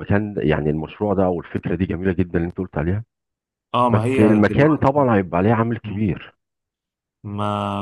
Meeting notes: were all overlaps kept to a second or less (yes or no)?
no